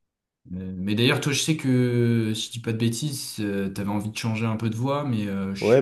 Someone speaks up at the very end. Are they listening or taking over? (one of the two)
taking over